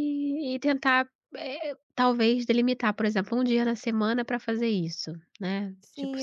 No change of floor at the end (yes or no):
no